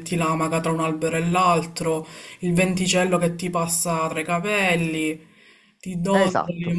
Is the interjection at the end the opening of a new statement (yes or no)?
no